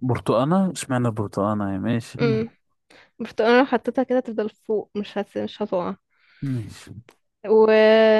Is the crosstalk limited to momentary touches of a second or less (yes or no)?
yes